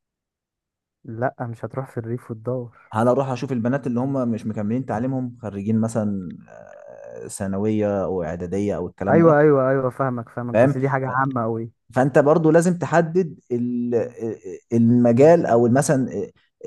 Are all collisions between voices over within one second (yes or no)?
yes